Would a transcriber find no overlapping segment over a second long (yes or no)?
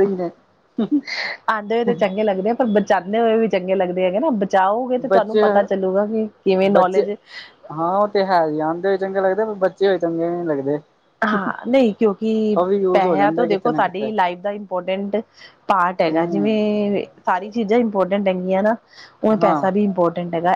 no